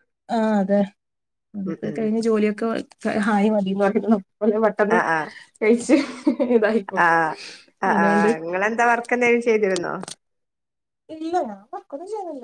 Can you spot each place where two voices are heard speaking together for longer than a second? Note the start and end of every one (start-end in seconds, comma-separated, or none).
none